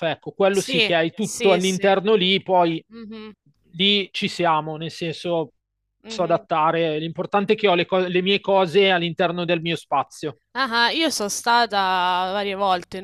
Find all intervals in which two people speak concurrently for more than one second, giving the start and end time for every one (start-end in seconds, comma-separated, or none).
0.5-1.9